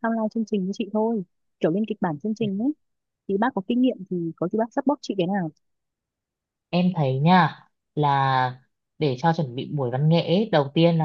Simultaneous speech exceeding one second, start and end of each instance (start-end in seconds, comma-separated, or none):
none